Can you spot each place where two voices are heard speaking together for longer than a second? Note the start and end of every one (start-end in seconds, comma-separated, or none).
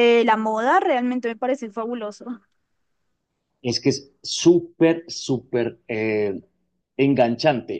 none